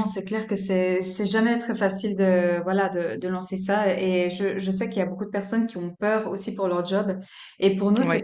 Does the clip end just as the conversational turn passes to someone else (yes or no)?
no